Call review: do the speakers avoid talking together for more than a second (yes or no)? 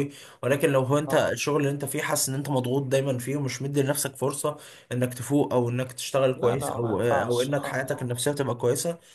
no